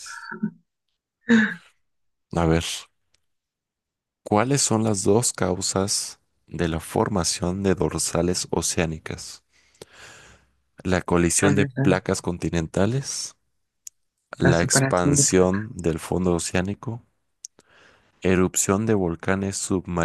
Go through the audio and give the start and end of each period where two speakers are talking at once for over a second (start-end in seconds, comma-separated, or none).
14.4-15.7